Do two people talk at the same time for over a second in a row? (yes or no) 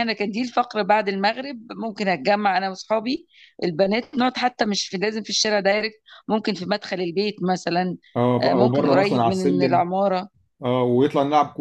yes